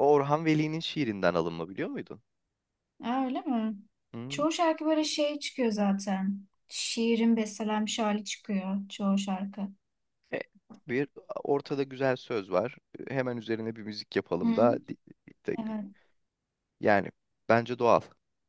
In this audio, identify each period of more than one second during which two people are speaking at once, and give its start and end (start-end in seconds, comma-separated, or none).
none